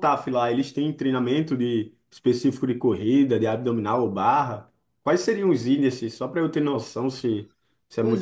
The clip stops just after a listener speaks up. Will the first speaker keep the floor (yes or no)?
no